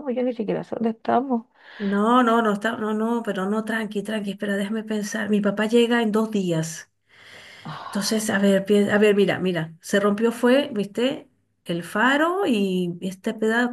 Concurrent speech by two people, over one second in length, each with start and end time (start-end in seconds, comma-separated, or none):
none